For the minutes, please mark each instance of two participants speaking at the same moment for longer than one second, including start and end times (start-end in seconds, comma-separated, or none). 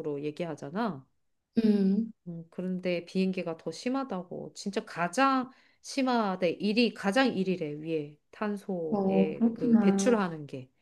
8.9-10.2